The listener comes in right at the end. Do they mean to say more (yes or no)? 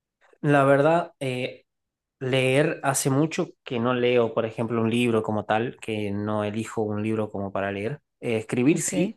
no